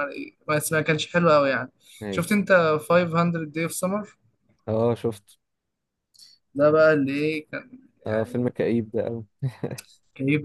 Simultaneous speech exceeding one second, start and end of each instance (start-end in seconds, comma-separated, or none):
none